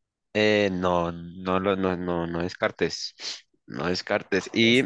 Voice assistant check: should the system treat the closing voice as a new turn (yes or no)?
no